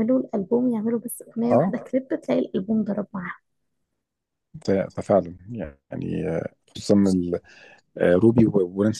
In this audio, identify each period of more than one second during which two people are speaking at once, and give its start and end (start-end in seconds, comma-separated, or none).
none